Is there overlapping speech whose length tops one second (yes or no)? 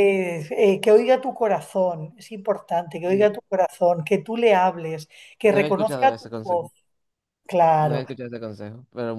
yes